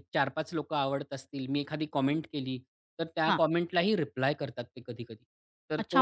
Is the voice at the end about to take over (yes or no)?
yes